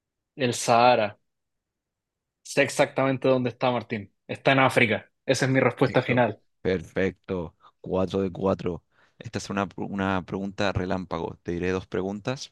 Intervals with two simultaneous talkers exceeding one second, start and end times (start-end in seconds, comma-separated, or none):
none